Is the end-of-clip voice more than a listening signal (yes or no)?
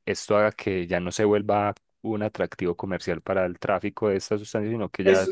no